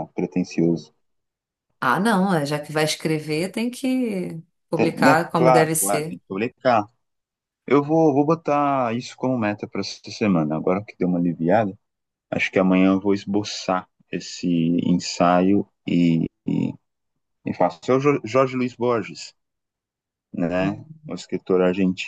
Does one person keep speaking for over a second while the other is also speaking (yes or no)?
yes